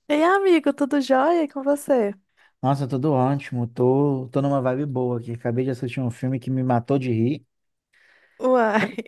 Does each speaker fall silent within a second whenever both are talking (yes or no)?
yes